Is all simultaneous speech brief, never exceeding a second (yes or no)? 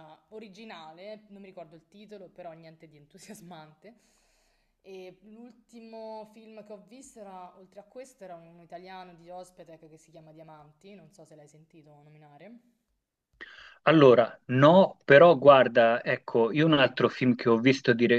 yes